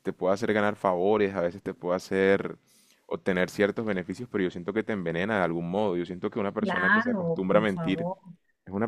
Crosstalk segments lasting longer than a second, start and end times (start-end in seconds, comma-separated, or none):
6.6-8.1